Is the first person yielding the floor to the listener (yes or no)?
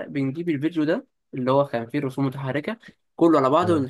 no